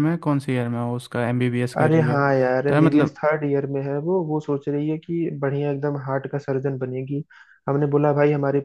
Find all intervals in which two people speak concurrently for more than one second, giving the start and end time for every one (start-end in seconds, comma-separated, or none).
1.8-3.2